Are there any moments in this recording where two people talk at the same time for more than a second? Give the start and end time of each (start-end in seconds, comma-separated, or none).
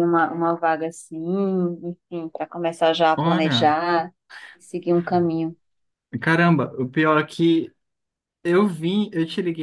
none